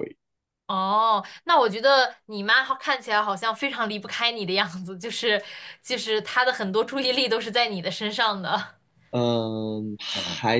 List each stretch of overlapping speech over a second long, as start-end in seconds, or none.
none